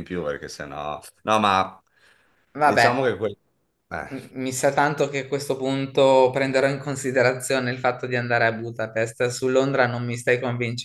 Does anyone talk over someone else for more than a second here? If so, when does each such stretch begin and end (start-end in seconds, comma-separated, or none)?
none